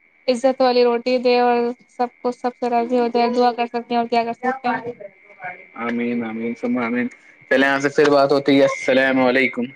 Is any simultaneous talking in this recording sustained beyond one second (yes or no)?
no